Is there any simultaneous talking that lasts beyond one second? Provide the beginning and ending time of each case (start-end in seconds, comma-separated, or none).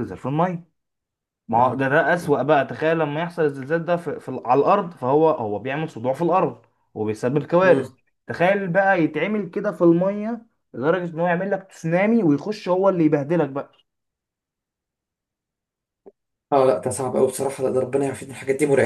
none